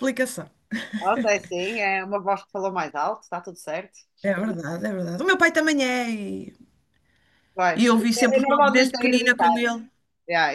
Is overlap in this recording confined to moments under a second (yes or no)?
no